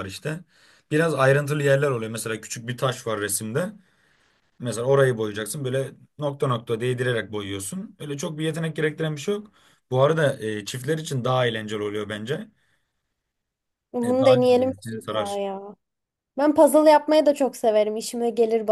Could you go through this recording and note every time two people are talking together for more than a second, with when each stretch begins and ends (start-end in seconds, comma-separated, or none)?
14.0-15.4